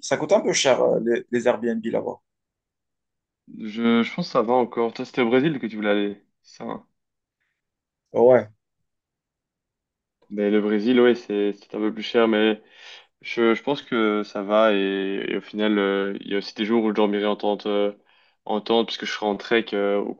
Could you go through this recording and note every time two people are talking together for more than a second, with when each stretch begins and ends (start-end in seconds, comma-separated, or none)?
none